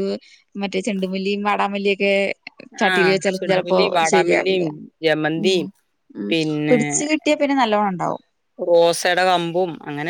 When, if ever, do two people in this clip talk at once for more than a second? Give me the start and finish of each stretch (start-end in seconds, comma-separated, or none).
2.9-4.6